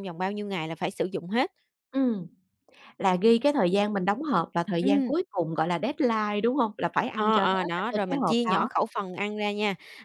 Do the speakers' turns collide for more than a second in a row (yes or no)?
yes